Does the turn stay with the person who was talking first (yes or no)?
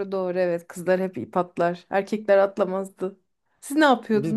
no